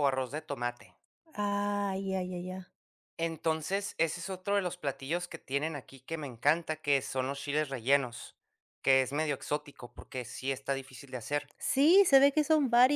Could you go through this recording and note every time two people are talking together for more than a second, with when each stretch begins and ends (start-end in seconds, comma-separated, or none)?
none